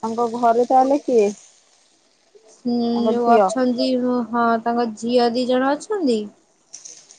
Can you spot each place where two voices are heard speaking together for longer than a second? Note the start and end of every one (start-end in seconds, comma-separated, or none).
none